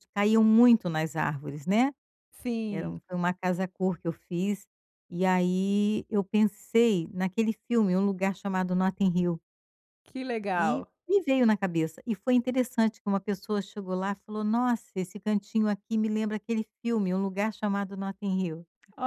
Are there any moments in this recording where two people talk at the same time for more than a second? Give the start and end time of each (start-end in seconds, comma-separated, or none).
none